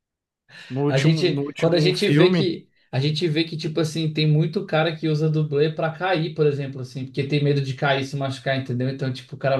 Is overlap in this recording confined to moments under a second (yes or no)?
no